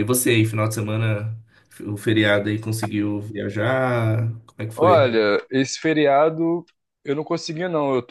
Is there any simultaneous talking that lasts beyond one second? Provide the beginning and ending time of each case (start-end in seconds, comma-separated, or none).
none